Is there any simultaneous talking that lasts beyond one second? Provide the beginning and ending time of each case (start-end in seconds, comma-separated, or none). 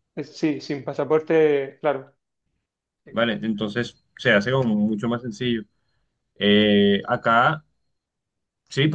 none